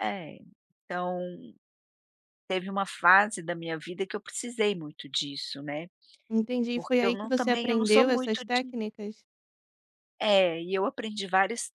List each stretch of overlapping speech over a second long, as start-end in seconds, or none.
6.7-8.8